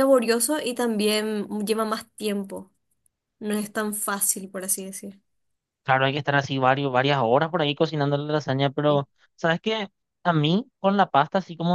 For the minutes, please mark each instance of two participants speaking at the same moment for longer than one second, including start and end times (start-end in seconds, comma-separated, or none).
none